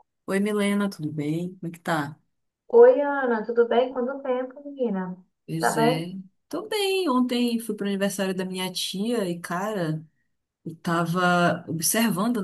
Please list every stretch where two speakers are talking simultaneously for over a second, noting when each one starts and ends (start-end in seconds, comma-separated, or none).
none